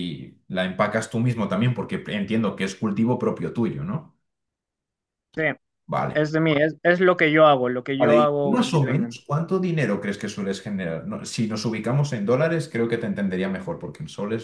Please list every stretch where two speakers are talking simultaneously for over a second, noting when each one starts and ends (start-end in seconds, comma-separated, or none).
8.0-9.2